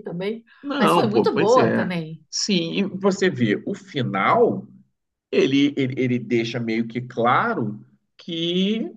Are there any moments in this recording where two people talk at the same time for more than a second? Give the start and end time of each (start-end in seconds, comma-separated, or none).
0.6-1.9